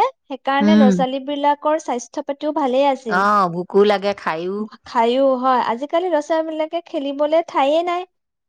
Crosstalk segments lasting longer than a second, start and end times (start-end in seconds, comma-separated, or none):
none